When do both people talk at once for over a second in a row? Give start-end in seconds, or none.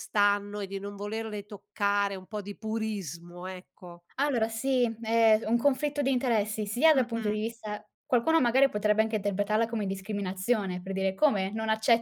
none